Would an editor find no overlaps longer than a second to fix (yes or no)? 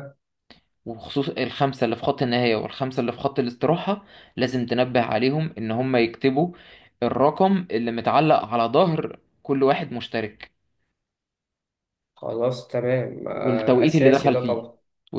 no